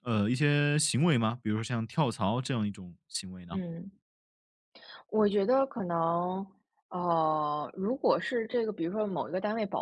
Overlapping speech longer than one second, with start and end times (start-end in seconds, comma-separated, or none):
none